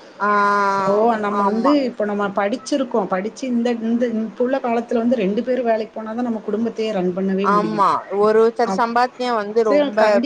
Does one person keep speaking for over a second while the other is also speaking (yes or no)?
no